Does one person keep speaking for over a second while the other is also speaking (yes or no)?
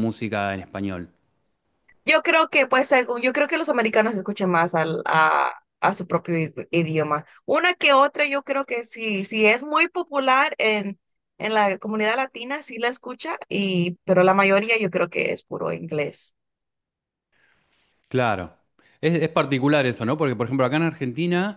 no